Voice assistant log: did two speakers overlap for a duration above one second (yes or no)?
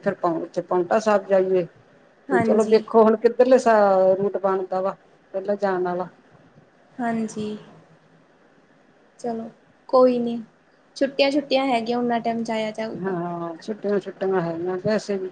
no